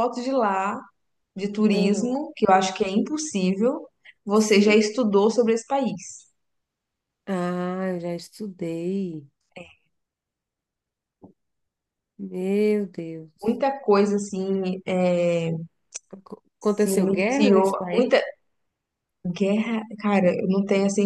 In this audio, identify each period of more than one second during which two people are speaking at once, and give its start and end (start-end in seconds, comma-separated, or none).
16.7-18.2